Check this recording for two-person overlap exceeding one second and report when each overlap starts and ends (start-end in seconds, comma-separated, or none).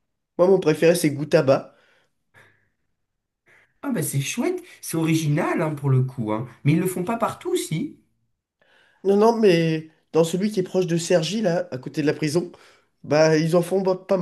none